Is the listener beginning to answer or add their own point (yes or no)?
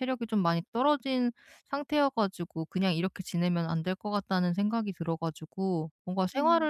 no